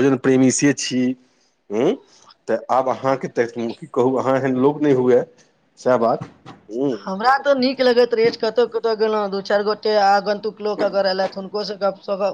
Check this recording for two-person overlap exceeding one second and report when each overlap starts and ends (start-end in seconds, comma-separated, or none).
none